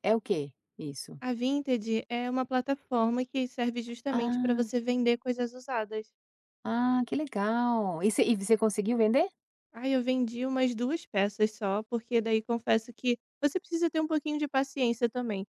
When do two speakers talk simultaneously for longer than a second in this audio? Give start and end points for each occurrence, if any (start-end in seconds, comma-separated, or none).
none